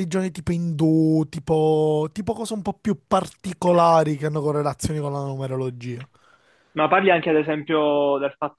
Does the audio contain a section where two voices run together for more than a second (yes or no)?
no